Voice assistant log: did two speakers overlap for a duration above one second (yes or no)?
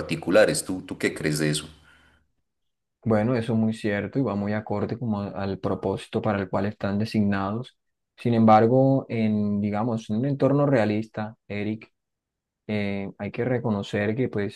no